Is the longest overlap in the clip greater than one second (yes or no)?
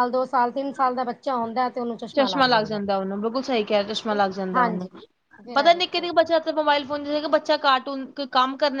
no